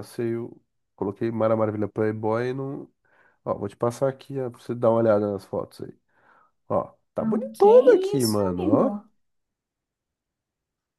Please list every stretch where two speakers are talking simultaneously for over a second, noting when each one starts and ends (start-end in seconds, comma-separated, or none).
7.2-8.9